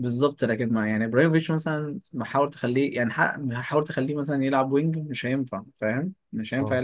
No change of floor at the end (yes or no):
no